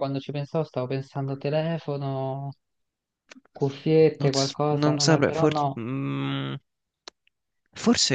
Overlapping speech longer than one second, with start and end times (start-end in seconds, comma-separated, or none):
4.2-5.8